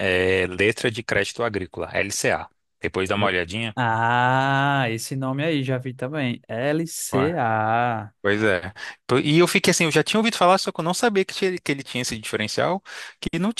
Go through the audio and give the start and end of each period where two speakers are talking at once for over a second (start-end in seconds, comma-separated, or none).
none